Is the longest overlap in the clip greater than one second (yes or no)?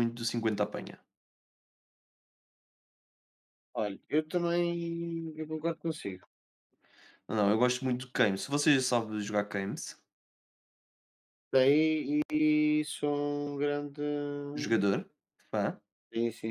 no